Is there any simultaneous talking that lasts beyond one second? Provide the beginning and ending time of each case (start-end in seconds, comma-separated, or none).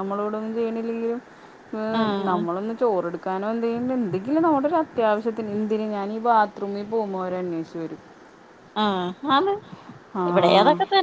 none